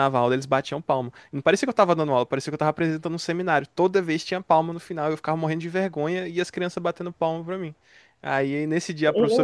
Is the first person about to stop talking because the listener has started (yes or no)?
no